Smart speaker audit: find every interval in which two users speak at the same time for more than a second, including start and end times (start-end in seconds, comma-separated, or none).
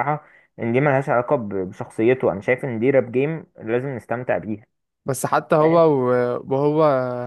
none